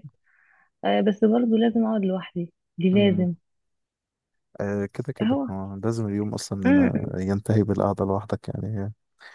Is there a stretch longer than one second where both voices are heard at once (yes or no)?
no